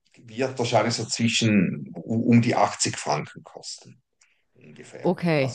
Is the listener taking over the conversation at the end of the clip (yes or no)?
no